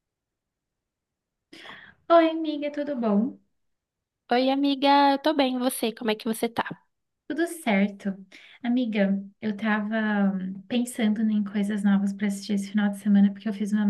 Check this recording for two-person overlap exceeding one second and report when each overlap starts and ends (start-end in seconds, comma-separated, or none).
none